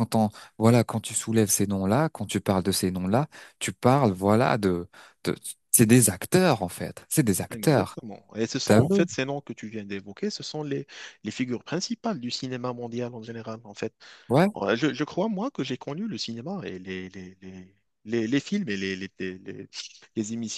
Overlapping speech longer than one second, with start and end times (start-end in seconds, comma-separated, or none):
none